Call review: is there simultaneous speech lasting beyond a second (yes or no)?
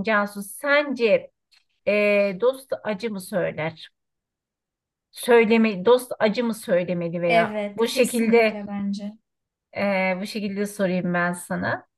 yes